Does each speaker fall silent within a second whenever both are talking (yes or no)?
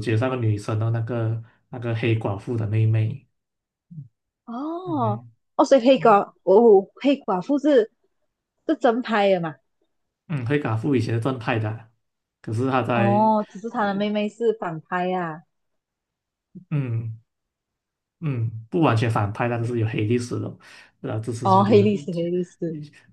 yes